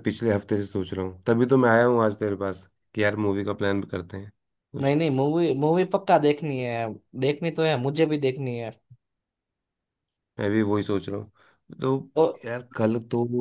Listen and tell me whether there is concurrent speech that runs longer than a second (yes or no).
no